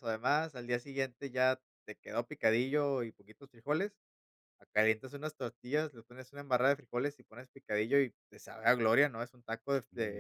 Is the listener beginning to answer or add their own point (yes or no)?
no